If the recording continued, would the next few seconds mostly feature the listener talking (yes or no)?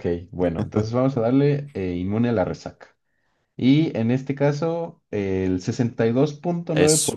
no